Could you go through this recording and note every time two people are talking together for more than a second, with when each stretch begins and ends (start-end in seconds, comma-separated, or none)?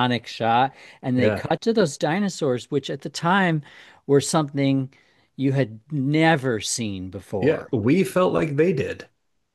none